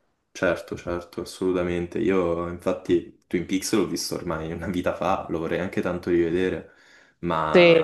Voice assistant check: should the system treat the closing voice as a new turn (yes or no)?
no